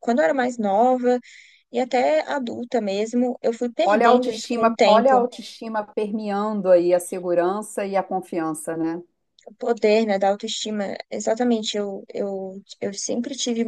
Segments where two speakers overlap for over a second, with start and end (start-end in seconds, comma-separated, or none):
3.8-5.3